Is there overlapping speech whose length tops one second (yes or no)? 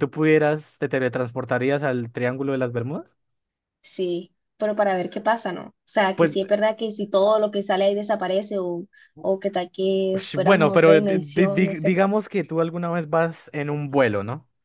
yes